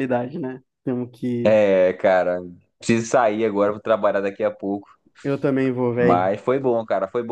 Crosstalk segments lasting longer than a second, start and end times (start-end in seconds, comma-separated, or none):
none